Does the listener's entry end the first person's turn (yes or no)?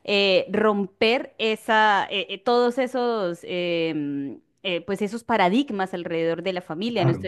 no